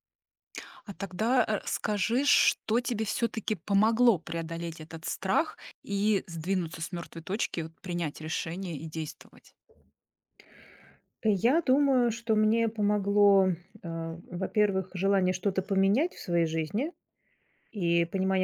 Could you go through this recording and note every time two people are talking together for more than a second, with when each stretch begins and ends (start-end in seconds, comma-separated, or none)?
none